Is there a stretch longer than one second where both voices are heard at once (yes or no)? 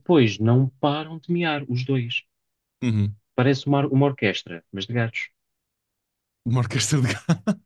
no